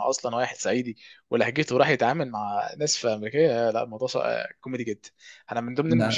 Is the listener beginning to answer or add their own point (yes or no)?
no